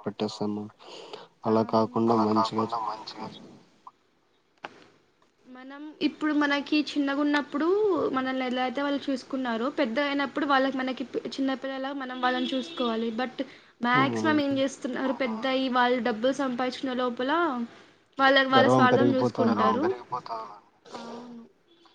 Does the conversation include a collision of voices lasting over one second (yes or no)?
yes